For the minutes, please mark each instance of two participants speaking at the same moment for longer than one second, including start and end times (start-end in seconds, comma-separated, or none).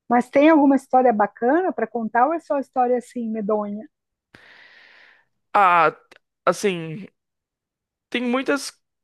none